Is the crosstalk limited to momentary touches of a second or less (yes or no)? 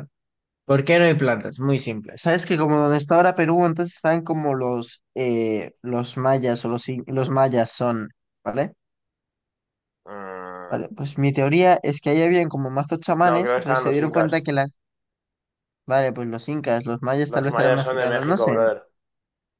no